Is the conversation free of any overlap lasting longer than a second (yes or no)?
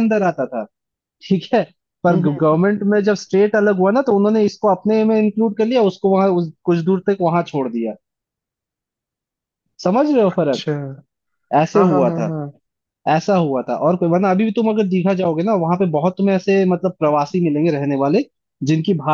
yes